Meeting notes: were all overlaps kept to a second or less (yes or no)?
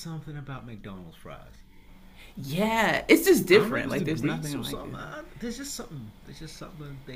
no